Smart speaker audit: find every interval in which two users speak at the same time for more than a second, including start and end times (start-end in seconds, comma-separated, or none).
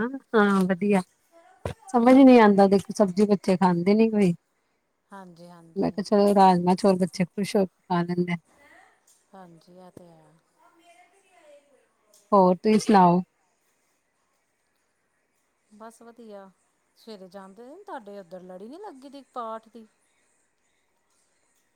none